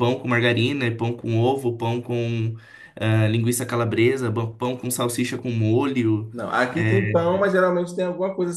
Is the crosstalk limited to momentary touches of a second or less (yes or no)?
yes